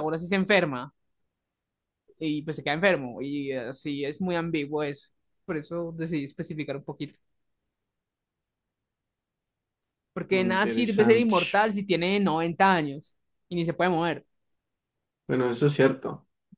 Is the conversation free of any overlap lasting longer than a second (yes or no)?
no